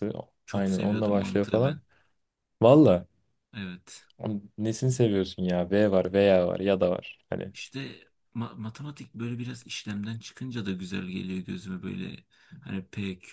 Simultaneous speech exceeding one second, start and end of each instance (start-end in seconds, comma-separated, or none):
0.5-1.8